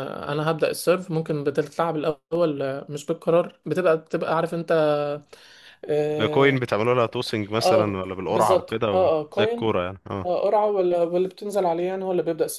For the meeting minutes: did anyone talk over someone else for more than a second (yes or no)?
yes